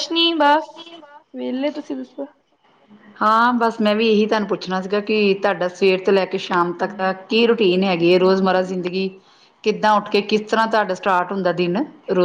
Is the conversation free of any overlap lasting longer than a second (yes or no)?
yes